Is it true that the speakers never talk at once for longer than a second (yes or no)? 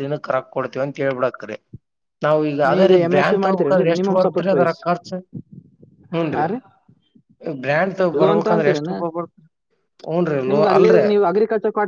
no